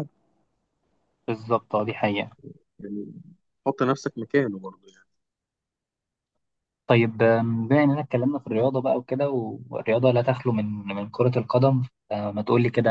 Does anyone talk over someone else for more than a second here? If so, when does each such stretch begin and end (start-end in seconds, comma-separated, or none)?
none